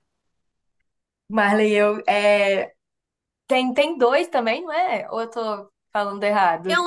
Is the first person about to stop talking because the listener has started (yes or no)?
yes